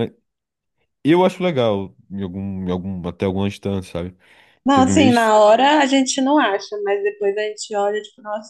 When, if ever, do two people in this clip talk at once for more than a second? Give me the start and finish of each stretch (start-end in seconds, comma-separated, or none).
none